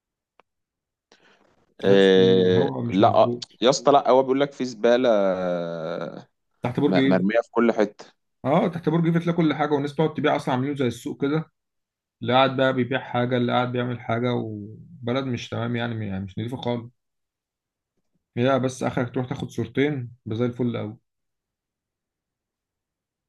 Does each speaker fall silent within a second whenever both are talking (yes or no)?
no